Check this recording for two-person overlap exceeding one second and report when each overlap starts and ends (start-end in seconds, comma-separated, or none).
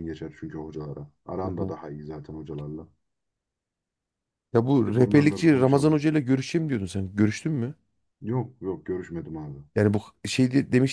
4.8-6.0